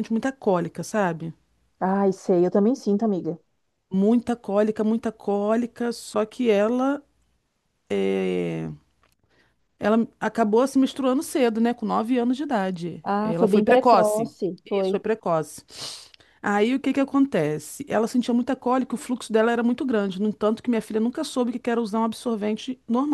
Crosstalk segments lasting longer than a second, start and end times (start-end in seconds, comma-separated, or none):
13.0-15.0